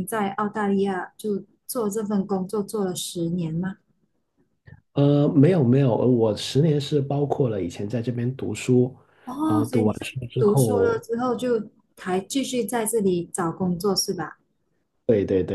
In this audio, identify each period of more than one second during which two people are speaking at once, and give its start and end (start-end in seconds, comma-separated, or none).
9.4-11.0